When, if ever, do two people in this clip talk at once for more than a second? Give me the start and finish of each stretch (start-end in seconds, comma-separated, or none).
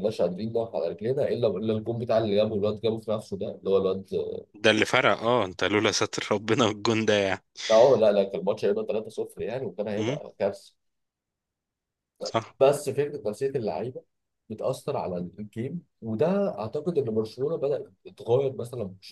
none